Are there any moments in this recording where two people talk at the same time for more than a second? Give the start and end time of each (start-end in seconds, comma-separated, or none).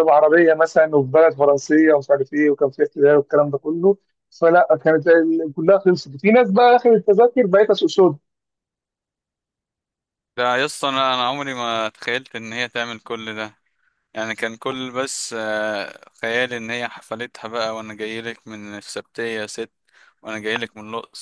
none